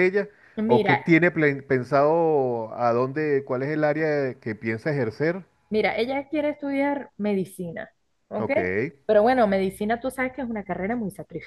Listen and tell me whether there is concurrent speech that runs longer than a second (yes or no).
no